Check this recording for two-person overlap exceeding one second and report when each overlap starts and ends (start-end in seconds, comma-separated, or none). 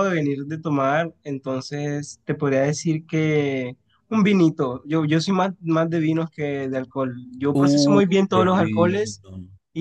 7.5-9.2